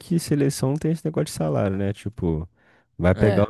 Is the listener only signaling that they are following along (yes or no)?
yes